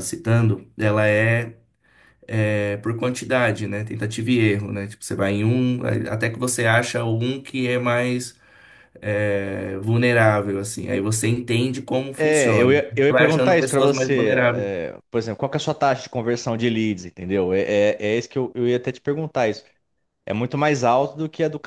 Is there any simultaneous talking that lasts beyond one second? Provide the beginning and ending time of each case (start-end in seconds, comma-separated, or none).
12.2-14.7